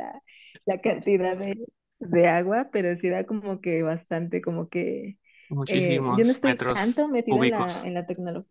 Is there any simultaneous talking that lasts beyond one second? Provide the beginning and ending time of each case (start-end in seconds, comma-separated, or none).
5.7-7.9